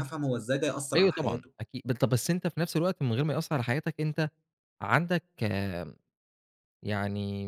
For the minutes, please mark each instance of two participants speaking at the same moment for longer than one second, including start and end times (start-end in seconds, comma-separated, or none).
none